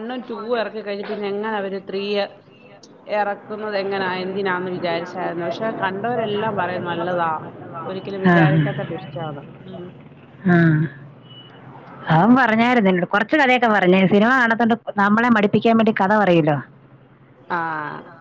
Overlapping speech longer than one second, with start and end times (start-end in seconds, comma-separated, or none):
none